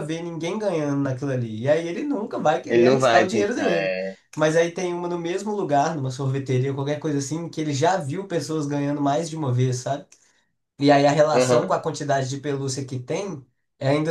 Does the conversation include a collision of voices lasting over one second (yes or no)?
yes